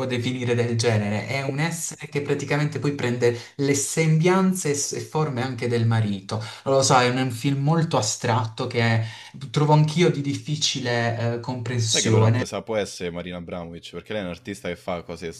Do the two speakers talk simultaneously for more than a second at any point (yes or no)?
no